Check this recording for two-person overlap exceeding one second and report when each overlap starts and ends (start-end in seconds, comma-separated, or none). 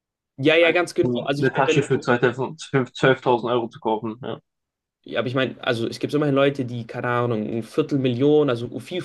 0.6-1.9